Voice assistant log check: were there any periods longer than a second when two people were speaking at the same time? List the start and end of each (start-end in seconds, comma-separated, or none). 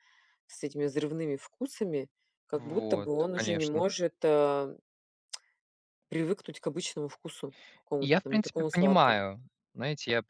2.5-3.9, 8.0-9.2